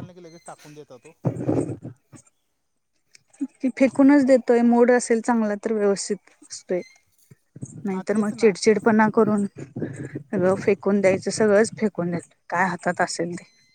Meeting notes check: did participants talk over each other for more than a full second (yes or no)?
no